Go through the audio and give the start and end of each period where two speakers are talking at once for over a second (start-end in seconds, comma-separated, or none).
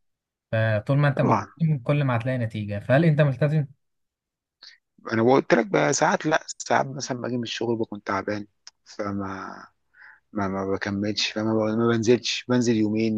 none